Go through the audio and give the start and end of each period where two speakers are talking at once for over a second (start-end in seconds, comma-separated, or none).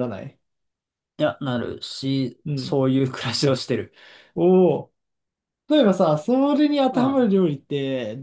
none